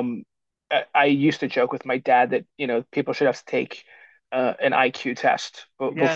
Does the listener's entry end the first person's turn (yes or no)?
yes